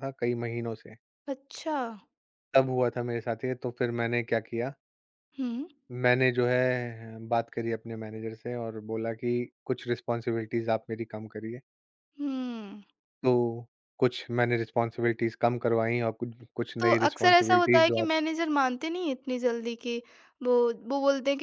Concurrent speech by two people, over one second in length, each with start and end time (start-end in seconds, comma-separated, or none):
16.8-18.0